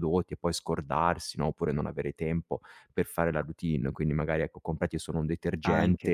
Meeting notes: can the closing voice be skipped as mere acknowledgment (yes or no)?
yes